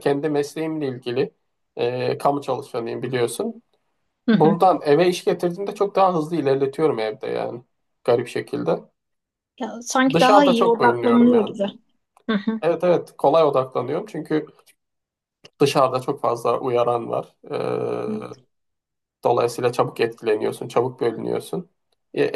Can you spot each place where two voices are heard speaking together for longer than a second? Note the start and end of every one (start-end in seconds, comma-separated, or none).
10.1-11.5